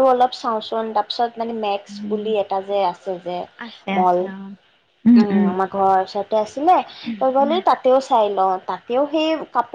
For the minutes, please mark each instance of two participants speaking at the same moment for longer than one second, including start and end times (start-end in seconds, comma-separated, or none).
none